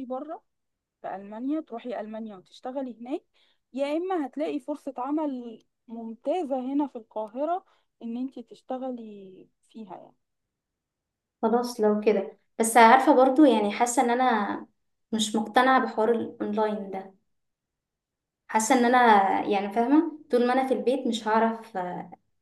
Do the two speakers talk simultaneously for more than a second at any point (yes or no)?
no